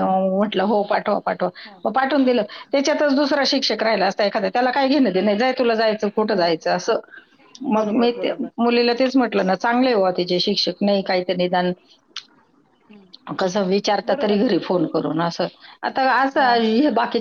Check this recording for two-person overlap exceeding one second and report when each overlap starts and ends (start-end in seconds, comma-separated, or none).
none